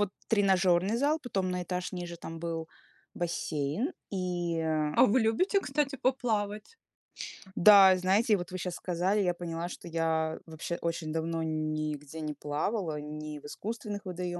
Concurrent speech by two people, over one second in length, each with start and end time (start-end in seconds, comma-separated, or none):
none